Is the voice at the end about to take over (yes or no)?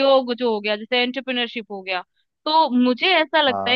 no